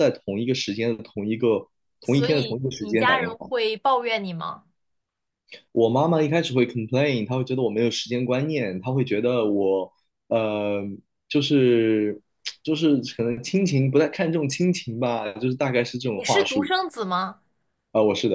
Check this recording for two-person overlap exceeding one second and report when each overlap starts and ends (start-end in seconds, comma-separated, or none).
2.0-3.5